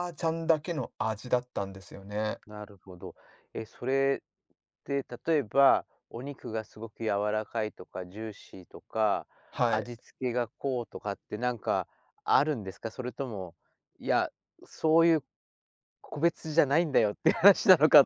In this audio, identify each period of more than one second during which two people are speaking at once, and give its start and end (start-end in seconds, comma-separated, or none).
none